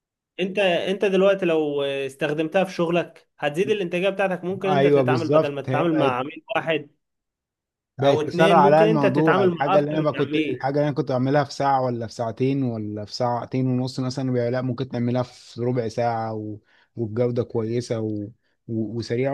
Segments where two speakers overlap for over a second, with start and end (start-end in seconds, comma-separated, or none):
4.7-6.2, 8.0-10.7